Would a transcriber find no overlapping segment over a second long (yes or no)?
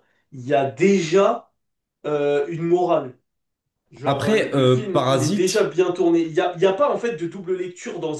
no